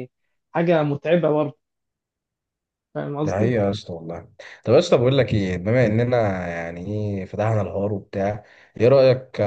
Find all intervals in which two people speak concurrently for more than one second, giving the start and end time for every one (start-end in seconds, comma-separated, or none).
none